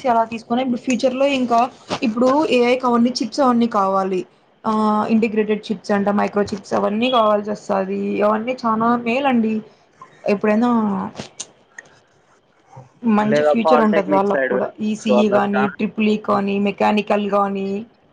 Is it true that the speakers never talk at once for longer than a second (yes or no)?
no